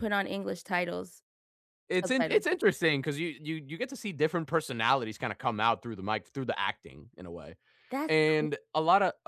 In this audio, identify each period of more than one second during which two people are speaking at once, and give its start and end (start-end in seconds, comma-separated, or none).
none